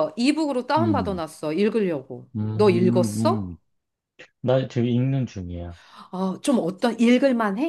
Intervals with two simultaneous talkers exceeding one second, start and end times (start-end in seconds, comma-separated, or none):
2.4-3.6